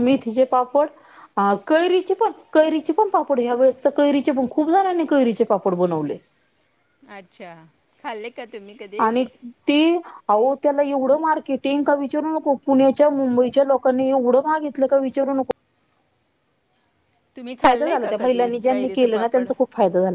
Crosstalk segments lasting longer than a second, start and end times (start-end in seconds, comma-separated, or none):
17.7-19.5